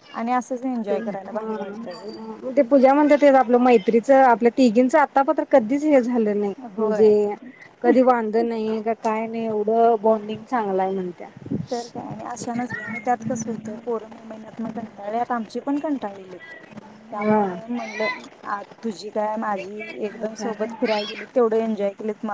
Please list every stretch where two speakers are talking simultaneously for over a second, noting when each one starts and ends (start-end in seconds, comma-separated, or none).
0.9-2.3